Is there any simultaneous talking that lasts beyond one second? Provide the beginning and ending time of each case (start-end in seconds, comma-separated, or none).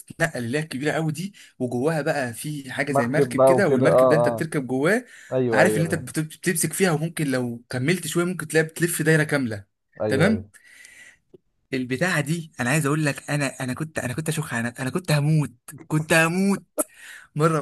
2.9-4.5